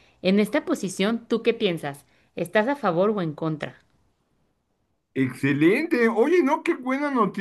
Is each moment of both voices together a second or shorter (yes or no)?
yes